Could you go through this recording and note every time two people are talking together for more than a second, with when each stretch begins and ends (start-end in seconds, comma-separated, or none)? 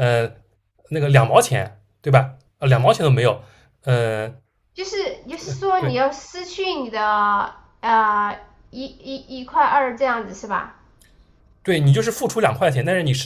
none